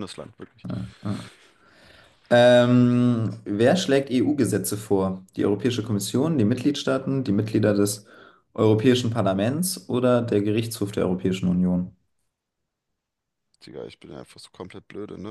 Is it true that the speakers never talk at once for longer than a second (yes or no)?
yes